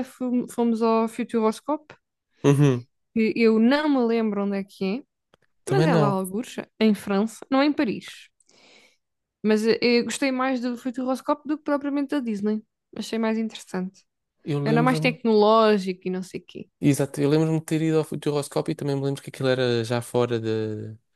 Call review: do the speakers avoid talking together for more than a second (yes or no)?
yes